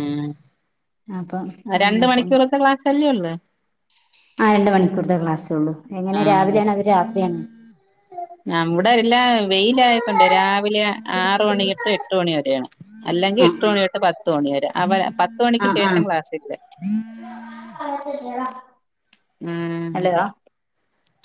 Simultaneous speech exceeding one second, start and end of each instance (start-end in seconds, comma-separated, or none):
none